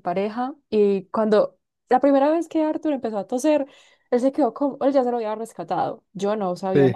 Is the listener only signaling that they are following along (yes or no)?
yes